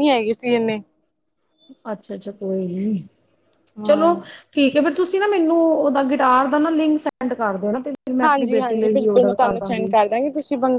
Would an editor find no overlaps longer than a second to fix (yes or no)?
no